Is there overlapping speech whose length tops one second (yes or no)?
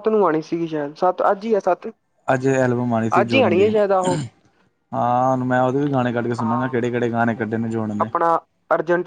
no